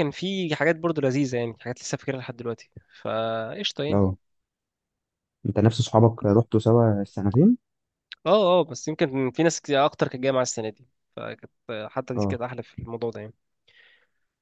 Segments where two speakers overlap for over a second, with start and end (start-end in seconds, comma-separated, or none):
none